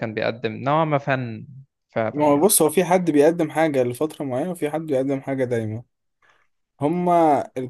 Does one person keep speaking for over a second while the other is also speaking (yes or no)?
no